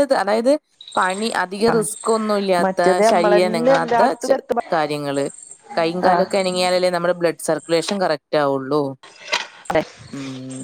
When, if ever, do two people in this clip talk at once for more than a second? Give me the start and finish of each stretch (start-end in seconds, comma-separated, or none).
2.6-4.3